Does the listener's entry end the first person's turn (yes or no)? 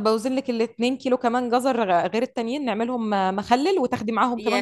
yes